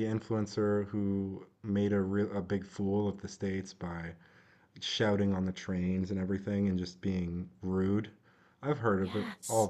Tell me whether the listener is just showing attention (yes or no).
yes